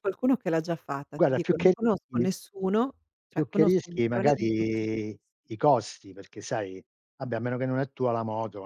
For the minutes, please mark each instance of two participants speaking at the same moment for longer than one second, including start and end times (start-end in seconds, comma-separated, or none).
3.3-5.1